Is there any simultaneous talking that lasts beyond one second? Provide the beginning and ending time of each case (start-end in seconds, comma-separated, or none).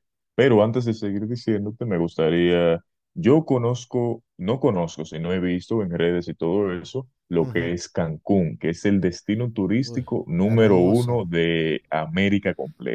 9.8-11.2